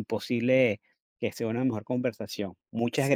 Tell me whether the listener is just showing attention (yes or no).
no